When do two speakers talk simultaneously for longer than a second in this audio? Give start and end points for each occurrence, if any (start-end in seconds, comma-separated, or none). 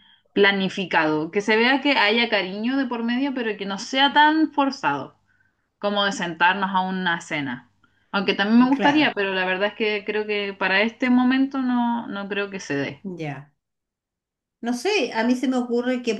none